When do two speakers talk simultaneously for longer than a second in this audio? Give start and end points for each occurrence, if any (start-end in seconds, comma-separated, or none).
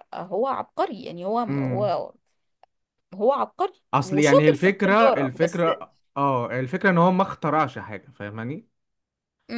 3.9-5.6